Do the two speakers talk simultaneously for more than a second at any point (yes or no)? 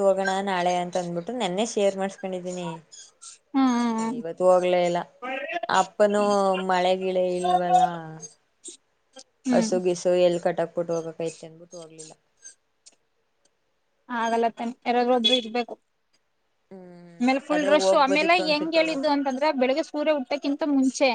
yes